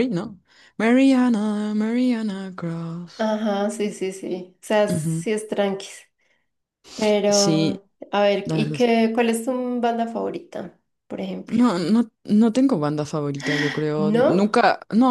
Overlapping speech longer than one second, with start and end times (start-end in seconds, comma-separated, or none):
none